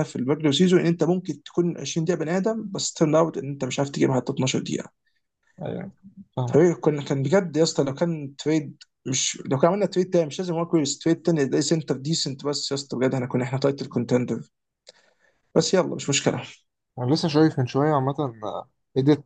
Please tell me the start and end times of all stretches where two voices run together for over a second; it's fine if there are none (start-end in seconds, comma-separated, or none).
none